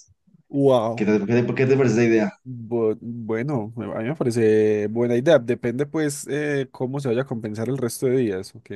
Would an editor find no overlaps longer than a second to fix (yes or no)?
yes